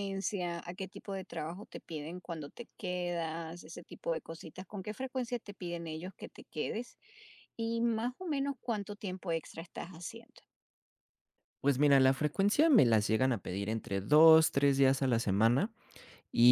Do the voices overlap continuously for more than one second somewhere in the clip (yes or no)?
no